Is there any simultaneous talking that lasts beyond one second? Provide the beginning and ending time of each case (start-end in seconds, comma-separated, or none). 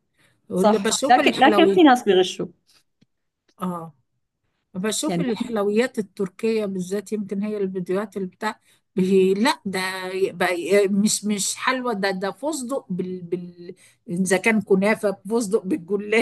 0.5-1.8